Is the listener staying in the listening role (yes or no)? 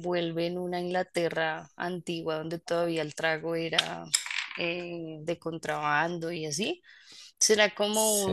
yes